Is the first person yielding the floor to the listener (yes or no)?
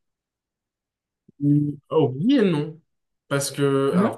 no